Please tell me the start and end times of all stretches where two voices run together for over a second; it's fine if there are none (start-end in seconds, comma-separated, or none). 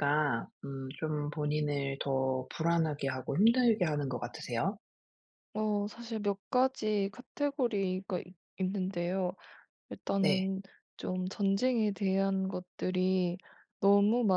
none